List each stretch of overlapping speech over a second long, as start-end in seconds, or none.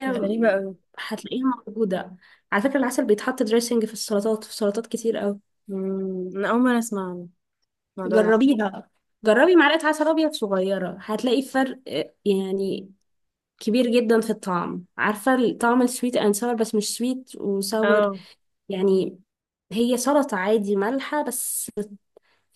none